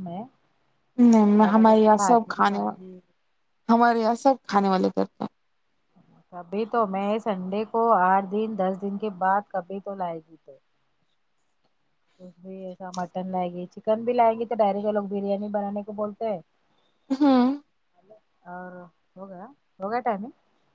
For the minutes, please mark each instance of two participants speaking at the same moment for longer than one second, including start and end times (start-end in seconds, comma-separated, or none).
1.4-3.0